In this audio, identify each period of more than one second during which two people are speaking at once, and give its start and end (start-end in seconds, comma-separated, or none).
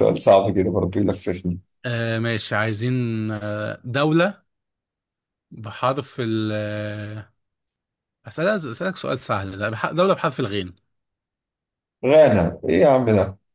none